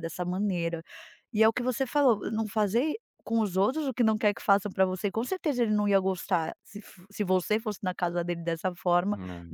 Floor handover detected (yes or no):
no